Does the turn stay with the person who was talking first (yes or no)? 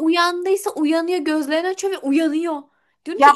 yes